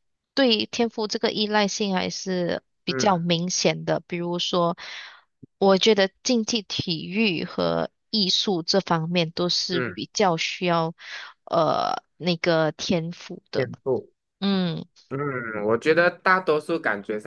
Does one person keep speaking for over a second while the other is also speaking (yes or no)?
no